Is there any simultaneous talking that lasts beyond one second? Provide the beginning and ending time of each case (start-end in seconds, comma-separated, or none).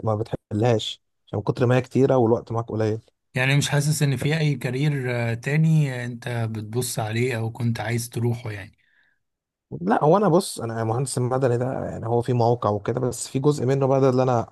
none